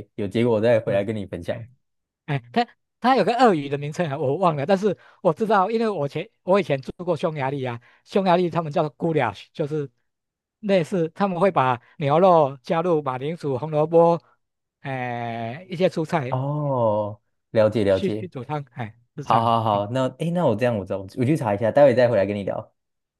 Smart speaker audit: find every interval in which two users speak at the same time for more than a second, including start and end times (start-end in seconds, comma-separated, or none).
none